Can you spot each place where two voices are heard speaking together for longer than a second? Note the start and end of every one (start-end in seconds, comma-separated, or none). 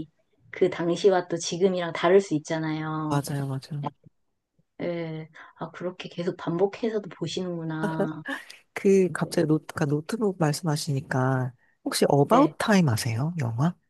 none